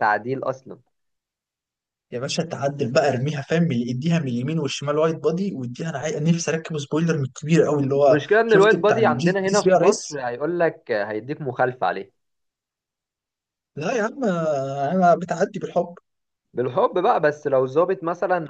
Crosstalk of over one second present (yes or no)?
yes